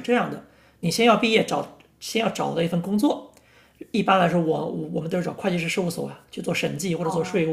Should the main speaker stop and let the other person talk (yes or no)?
no